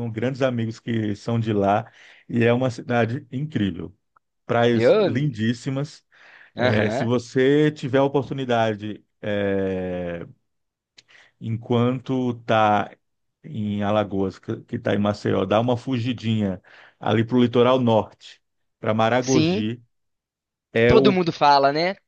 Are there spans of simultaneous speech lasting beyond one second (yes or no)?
no